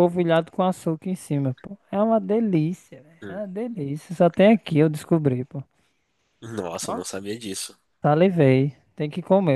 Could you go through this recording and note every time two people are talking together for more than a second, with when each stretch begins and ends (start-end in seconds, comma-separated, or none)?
none